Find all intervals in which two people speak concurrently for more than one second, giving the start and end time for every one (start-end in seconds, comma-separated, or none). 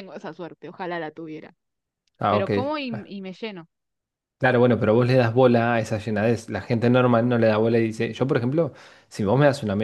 none